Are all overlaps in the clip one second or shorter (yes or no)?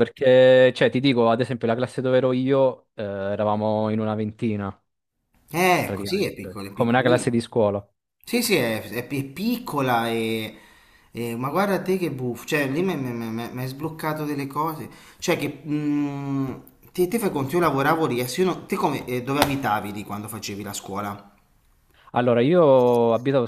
no